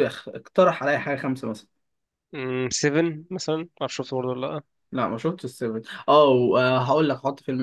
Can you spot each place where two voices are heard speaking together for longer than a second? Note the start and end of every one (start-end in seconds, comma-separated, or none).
none